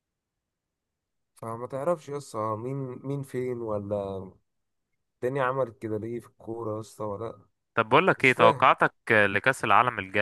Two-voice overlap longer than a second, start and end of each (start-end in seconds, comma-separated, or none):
none